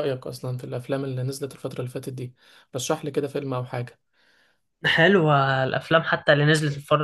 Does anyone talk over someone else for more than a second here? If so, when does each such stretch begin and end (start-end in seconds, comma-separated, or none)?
none